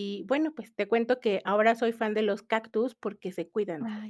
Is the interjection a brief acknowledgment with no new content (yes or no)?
no